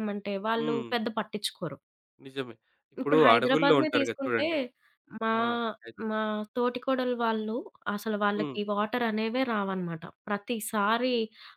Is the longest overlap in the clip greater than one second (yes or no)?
yes